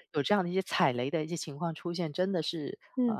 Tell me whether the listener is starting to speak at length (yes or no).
no